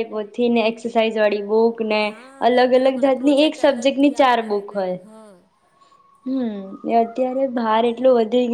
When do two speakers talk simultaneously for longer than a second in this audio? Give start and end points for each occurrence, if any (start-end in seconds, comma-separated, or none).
2.8-5.0